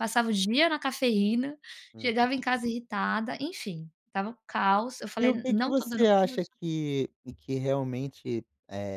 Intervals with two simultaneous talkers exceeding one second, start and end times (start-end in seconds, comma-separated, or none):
5.2-6.5